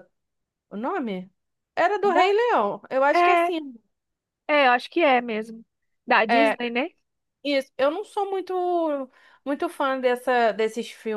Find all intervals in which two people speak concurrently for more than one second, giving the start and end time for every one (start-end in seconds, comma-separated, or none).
none